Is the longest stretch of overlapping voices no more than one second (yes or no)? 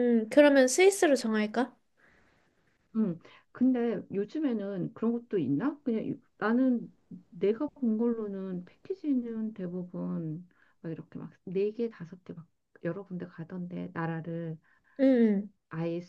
yes